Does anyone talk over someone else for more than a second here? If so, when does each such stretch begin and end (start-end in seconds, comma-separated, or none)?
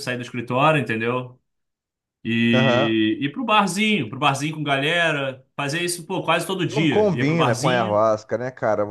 6.7-8.0